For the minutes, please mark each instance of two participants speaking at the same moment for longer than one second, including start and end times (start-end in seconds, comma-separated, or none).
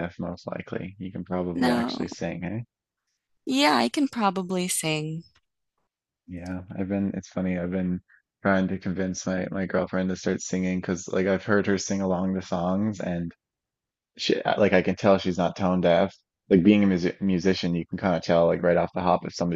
none